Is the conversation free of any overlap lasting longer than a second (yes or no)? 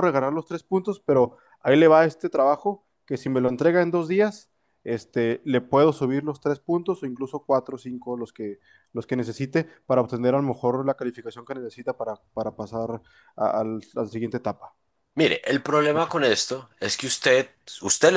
yes